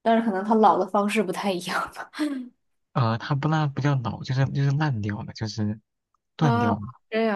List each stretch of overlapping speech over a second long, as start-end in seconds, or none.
none